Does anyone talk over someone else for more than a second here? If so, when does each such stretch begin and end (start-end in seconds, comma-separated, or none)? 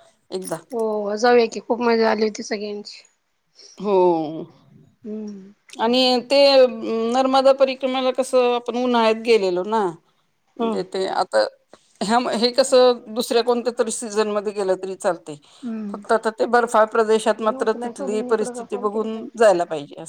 17.4-19.5